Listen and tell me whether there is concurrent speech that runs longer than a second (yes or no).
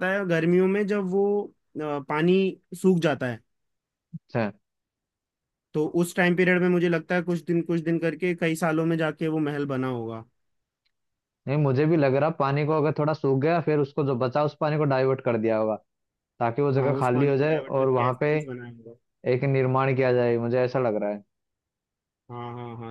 yes